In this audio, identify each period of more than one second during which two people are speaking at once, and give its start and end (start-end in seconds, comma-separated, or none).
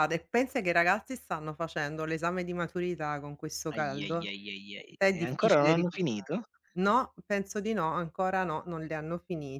5.0-6.3